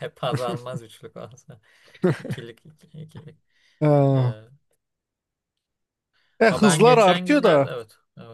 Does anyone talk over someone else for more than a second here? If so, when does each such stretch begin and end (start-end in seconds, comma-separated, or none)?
6.5-7.7